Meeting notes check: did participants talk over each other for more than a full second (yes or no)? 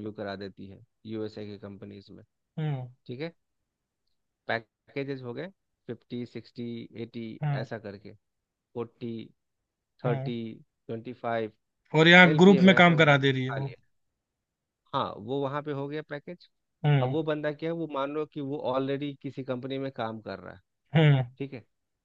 yes